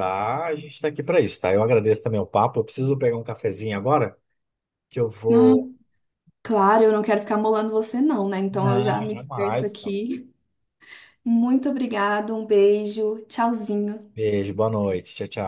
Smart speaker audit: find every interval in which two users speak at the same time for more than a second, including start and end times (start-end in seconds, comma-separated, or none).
8.5-9.8